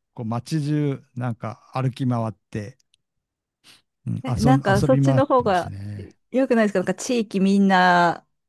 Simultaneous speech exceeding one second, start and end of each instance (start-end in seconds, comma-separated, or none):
4.2-5.7